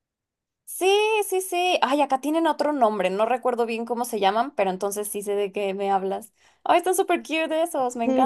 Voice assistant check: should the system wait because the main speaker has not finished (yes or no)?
no